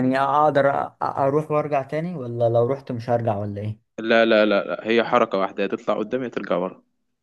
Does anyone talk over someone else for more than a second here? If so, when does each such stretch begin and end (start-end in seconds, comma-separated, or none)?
none